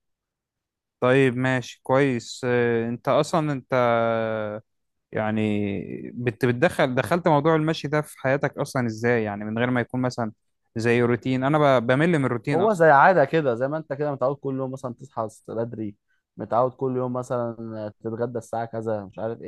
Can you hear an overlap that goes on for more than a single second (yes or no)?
no